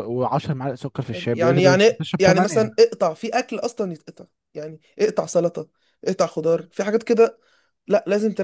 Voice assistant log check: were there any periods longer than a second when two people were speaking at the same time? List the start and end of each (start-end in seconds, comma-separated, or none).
1.1-2.7